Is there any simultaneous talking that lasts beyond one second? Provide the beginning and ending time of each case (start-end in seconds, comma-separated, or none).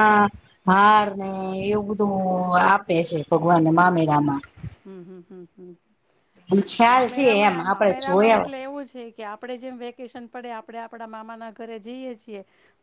6.9-8.5